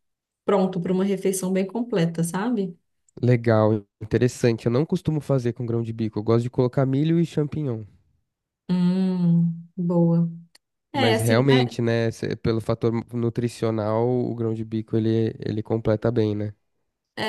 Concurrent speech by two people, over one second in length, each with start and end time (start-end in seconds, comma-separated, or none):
none